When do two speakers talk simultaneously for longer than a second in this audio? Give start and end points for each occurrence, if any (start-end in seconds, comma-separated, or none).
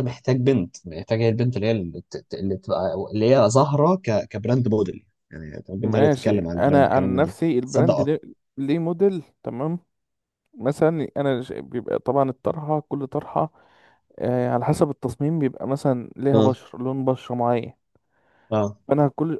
5.8-8.2